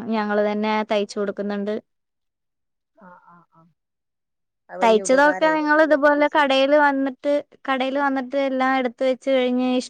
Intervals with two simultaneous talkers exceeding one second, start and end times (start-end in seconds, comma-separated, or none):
4.8-6.5